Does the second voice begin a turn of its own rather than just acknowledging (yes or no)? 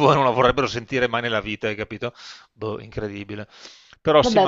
no